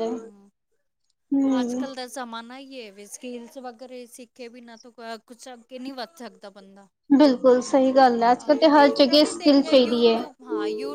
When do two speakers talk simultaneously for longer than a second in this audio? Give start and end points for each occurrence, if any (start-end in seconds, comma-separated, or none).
8.3-10.2